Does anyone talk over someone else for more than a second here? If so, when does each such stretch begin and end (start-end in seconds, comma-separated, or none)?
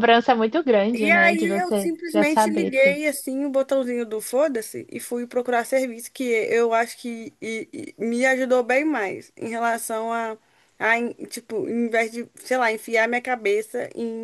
1.0-3.0